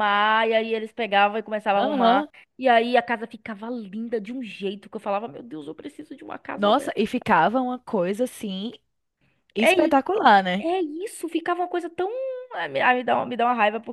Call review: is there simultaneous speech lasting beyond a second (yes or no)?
no